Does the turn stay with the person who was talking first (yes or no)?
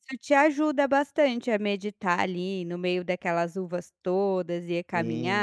no